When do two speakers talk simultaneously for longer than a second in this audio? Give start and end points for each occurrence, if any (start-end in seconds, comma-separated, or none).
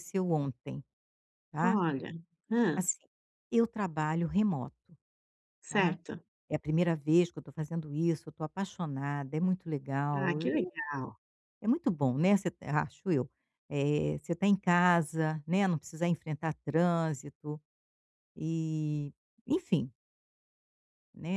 none